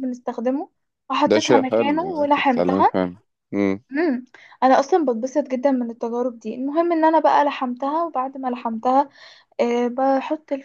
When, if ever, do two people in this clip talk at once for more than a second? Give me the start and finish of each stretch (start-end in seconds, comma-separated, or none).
1.3-3.0